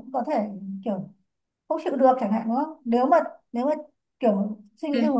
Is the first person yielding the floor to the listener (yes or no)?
no